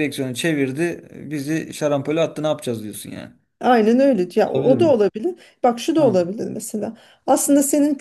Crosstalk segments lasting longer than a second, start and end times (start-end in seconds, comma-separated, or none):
none